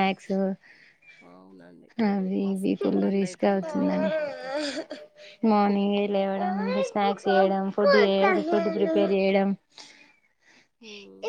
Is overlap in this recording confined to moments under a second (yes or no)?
no